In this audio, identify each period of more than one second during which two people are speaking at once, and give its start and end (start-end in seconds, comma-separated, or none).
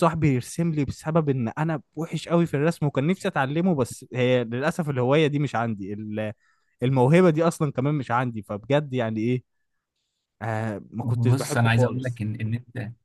11.0-12.2